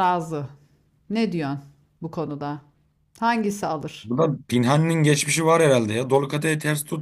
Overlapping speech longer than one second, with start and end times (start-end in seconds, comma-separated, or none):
none